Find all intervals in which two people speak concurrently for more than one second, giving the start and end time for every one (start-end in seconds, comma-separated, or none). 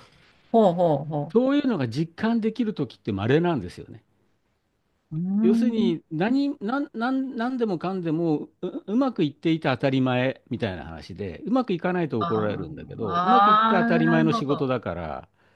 13.0-14.7